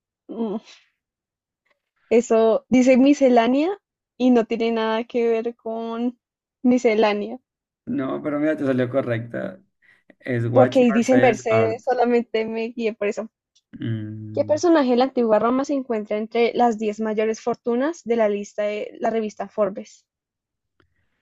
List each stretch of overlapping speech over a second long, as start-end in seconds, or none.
10.5-11.8